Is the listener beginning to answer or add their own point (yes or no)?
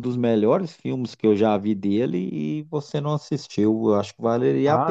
yes